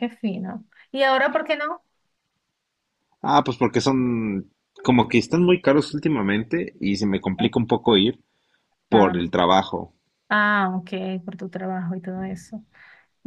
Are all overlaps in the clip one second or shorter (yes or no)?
yes